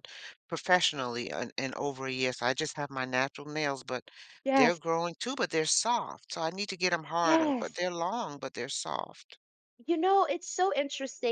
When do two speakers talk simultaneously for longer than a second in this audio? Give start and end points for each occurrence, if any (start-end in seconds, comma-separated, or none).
none